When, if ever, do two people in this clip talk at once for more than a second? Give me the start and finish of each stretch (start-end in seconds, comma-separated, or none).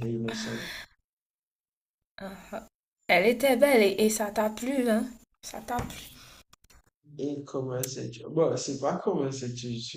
none